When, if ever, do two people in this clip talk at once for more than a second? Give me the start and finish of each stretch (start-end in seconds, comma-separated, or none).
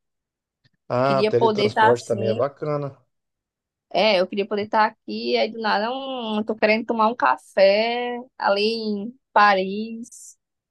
1.1-2.4